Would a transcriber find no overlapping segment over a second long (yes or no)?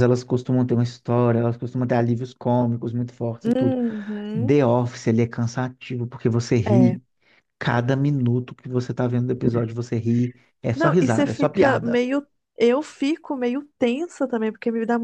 no